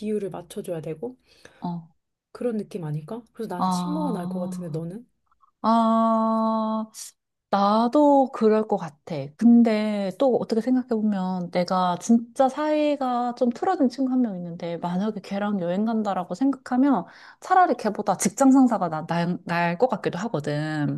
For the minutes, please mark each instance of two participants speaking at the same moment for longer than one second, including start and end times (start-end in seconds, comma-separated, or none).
3.6-4.8